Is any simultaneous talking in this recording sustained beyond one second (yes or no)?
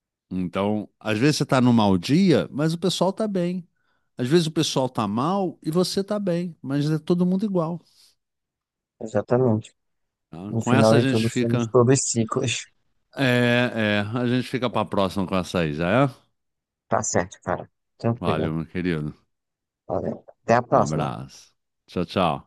yes